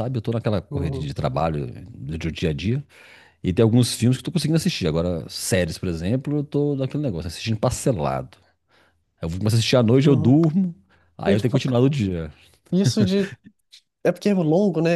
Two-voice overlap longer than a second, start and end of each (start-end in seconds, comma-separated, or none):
none